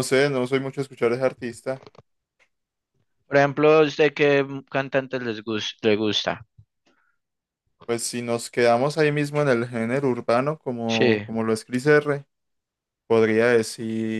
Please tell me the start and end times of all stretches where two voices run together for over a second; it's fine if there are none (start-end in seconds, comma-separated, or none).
none